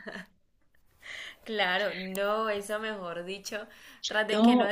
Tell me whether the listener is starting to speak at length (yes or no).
no